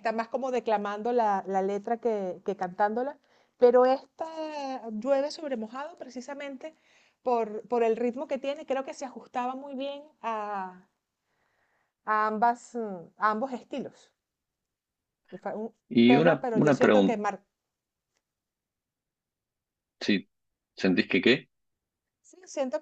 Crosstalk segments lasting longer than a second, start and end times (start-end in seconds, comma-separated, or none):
15.9-17.2